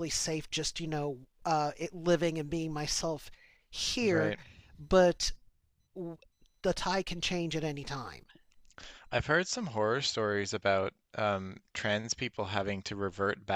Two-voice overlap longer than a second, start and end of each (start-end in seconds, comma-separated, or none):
none